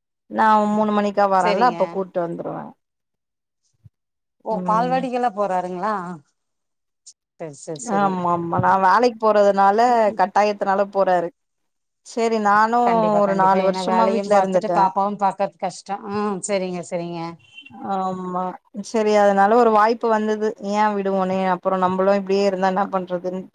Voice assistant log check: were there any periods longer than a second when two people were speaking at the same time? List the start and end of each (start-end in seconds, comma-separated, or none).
13.2-14.8